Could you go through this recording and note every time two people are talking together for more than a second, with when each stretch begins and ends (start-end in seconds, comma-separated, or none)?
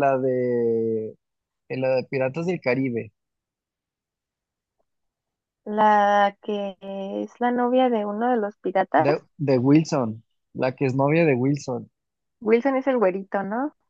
none